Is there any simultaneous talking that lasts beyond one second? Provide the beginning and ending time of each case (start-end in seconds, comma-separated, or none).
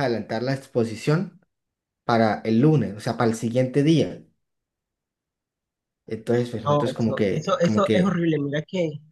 6.7-8.3